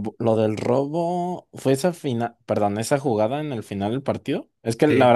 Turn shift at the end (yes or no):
no